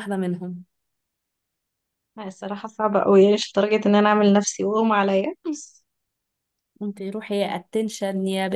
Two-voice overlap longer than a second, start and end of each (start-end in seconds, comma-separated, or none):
none